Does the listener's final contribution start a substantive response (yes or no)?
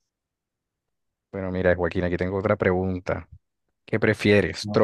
no